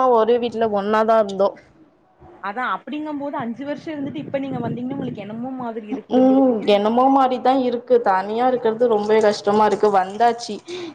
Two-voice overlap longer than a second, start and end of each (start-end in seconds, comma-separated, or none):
6.2-9.3